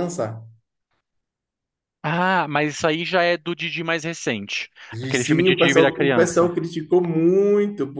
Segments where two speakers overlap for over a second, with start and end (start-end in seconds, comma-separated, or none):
4.9-6.5